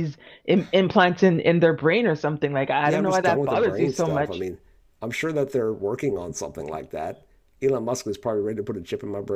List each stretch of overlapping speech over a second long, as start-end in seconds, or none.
2.8-4.4